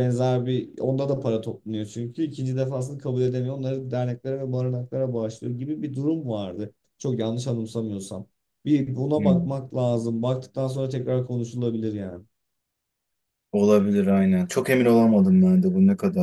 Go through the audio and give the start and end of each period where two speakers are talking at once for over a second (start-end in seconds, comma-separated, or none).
none